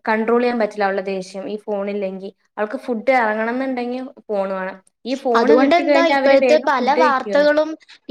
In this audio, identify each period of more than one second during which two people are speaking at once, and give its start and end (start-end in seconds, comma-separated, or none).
5.4-7.4